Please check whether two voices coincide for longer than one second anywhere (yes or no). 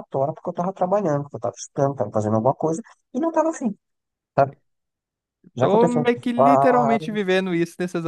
yes